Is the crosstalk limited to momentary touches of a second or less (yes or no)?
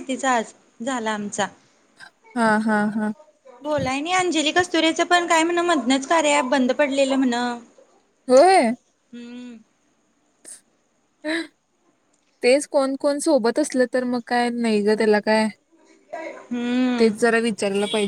yes